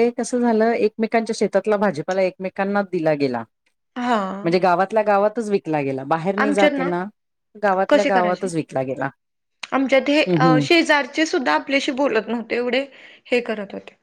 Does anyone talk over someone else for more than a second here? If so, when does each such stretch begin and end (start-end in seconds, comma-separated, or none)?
none